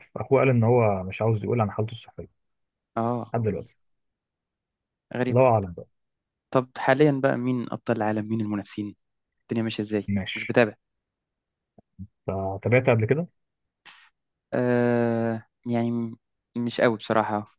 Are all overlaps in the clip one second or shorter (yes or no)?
yes